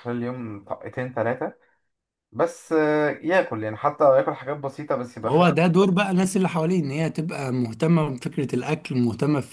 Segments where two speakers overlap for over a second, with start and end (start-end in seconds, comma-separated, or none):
none